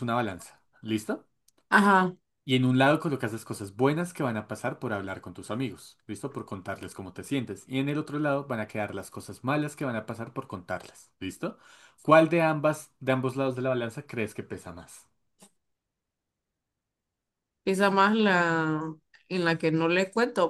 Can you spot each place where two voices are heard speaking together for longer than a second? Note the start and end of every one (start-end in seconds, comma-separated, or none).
none